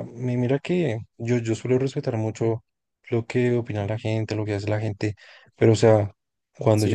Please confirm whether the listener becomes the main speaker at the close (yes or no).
yes